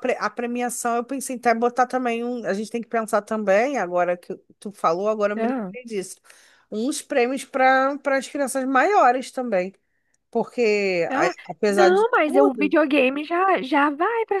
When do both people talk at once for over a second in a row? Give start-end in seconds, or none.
11.1-12.8